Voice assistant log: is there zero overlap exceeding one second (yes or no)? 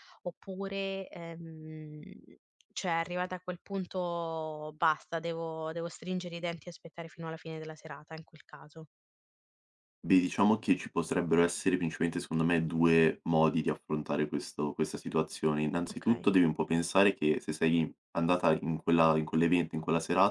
yes